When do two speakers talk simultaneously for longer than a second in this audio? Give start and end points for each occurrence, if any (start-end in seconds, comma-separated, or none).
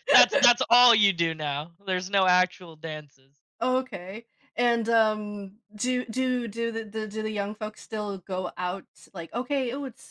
none